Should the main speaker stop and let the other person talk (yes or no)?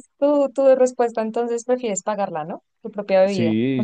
yes